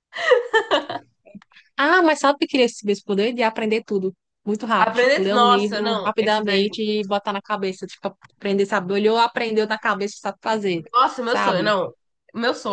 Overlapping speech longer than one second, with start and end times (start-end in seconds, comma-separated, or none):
4.8-6.7